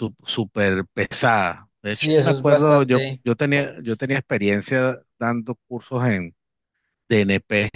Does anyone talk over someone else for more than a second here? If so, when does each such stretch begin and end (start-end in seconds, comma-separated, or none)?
1.9-3.8